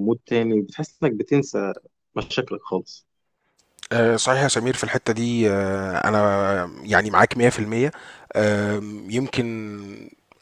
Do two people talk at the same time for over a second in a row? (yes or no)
no